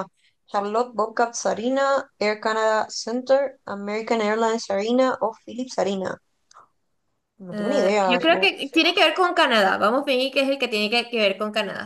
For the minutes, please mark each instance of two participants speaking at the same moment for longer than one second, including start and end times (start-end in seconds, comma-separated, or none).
7.5-8.9